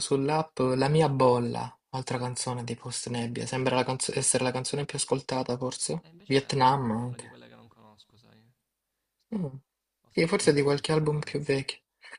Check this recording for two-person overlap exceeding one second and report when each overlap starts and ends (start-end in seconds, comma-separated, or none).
6.0-7.4, 10.1-11.4